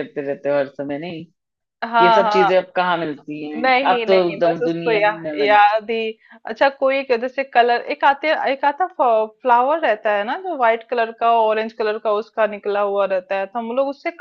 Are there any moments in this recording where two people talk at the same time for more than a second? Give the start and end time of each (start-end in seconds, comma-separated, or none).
3.6-5.6